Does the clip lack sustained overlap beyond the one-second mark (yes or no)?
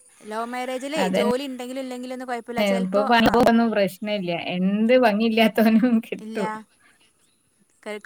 yes